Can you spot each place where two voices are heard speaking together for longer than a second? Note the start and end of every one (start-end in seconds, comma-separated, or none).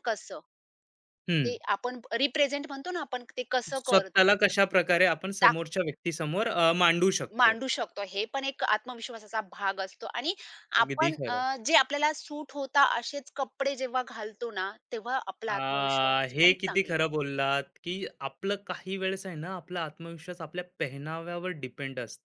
15.5-16.9